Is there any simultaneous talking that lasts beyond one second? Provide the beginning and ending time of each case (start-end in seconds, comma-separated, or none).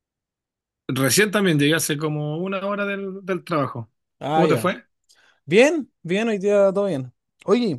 none